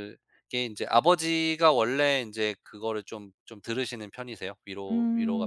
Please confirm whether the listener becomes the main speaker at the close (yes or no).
yes